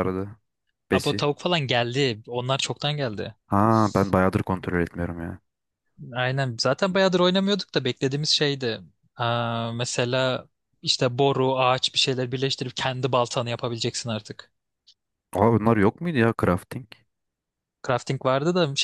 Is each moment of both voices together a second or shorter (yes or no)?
yes